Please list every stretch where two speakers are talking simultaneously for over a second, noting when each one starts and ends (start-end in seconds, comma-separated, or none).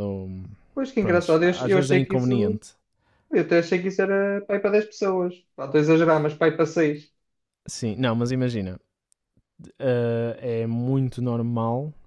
1.0-2.6